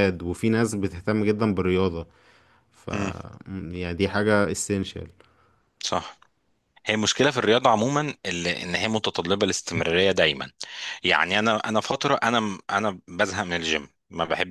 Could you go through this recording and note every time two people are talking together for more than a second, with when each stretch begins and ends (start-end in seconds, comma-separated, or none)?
none